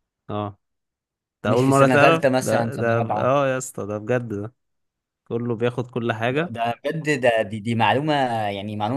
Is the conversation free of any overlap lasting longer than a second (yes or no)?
no